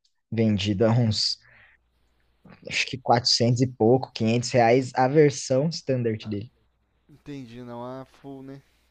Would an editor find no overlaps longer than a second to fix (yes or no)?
yes